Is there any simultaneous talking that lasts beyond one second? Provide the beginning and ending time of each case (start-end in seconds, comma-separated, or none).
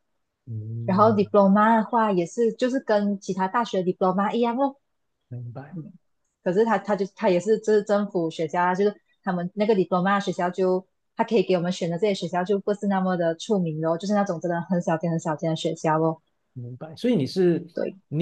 none